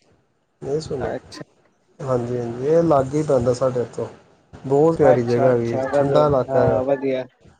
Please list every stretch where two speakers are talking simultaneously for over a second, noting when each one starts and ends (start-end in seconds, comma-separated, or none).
5.1-6.8